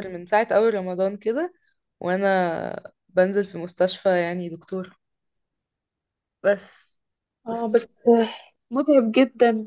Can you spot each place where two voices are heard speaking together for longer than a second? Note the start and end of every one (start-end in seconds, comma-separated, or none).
none